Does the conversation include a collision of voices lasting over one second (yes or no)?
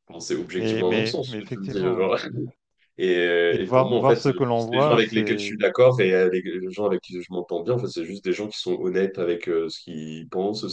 yes